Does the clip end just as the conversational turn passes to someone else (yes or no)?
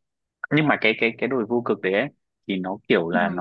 no